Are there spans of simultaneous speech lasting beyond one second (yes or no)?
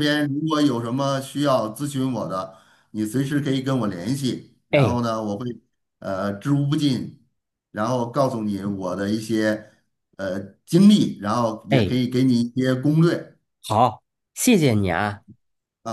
no